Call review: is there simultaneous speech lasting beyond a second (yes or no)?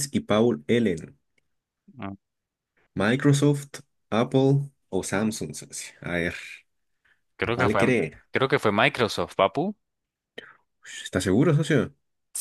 no